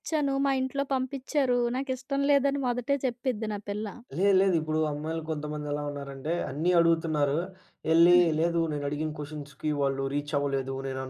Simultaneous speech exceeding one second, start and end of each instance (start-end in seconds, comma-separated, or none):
none